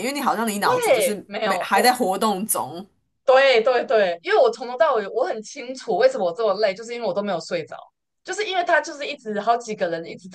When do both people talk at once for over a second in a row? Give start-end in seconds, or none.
0.6-1.9